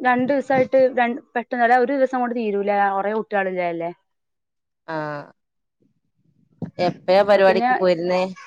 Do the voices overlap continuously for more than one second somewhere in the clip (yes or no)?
no